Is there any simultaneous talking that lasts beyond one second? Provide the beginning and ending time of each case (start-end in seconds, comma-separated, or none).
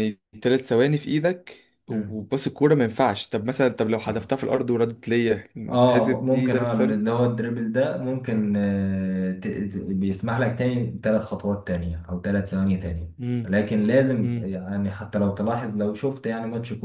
5.7-7.0